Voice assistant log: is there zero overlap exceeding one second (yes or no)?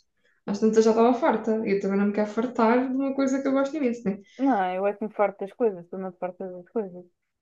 yes